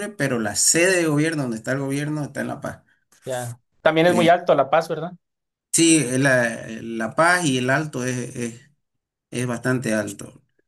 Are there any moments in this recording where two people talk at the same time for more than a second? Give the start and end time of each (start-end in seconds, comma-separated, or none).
none